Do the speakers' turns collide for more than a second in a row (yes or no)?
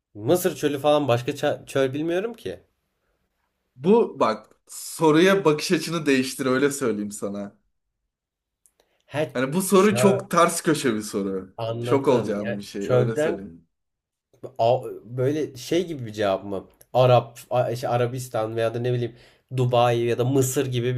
yes